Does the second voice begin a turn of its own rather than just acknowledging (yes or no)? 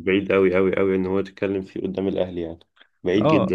yes